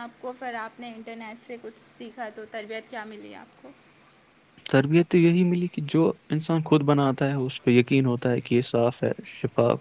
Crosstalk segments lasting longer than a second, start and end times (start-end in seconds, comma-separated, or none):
none